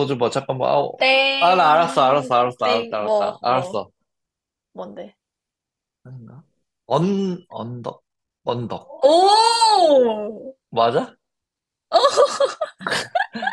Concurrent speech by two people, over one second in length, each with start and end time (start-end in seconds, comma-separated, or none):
1.4-3.8